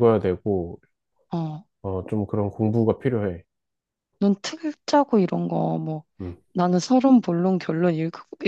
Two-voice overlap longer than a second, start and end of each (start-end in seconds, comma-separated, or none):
none